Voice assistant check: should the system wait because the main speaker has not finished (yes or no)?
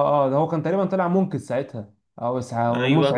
no